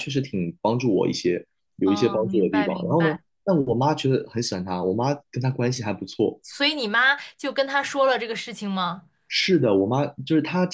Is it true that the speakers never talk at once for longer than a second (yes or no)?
no